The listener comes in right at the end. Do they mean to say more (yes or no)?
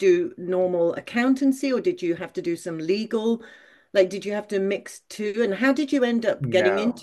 yes